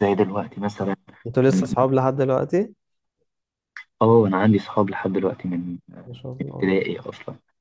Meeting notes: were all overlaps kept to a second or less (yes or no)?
yes